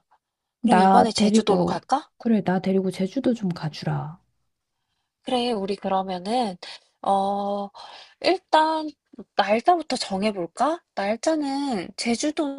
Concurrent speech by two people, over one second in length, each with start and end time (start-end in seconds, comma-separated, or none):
0.6-2.1